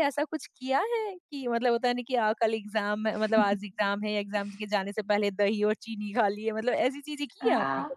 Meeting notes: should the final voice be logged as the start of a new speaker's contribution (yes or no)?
yes